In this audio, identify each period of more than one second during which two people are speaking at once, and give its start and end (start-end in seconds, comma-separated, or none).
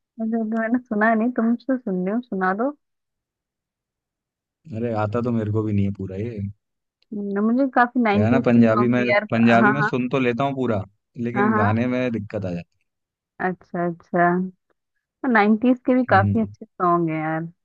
8.1-9.9